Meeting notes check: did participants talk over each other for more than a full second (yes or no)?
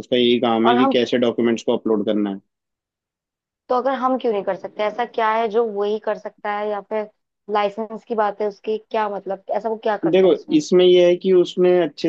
no